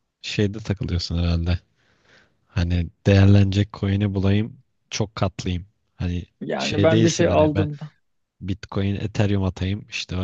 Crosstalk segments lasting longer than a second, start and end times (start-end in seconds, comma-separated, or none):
6.4-7.7